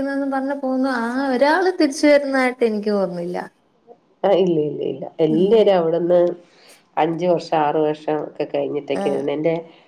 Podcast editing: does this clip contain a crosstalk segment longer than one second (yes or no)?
no